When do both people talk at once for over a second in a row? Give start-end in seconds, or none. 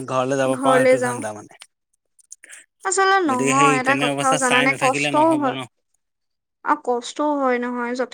3.3-5.6